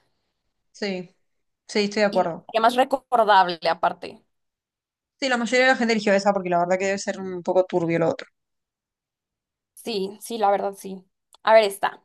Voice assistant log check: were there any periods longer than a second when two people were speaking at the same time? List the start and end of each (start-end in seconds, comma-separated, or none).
none